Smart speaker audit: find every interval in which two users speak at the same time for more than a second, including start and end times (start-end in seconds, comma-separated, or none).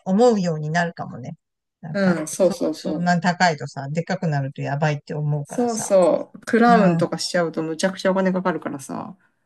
1.9-3.3